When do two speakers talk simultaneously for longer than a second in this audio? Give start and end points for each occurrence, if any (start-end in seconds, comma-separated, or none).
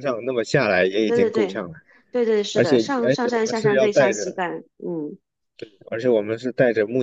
2.5-4.4